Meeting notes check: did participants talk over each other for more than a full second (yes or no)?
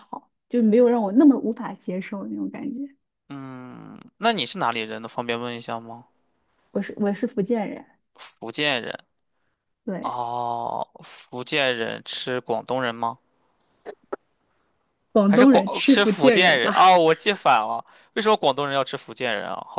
yes